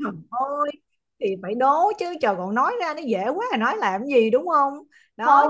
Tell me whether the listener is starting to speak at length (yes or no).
yes